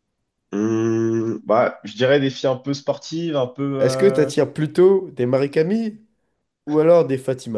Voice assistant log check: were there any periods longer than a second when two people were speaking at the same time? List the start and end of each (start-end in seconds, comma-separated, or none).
none